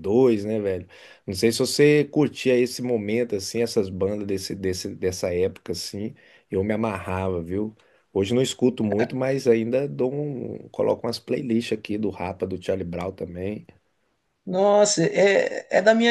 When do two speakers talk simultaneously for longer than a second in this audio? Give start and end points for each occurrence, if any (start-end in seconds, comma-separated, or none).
none